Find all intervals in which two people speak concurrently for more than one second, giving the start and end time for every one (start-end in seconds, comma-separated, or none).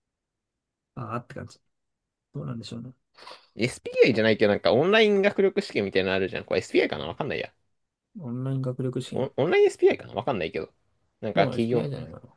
none